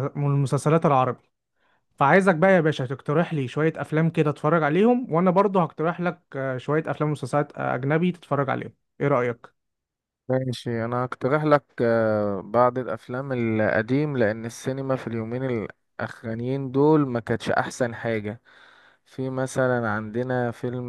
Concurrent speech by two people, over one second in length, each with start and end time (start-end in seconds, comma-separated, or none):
none